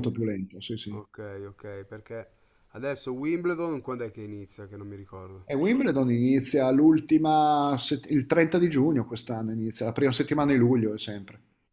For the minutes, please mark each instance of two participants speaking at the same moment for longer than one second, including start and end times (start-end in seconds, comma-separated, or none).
none